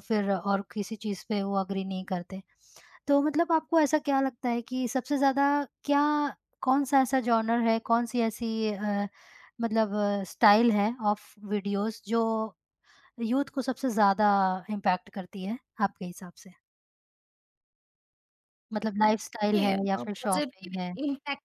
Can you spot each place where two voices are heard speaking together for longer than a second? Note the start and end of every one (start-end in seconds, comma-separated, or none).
19.4-20.9